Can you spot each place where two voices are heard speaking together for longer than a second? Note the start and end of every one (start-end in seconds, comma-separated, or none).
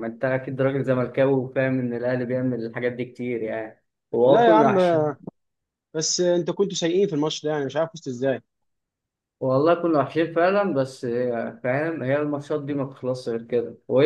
none